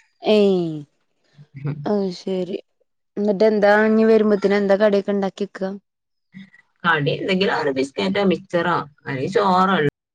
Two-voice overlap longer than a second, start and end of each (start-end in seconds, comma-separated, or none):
none